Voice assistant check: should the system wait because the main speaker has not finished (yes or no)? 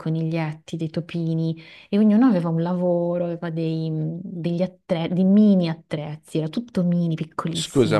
no